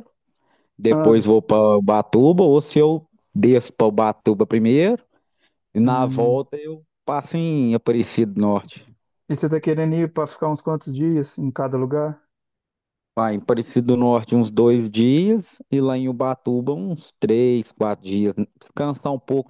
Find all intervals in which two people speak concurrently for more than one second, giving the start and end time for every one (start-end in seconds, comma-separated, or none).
none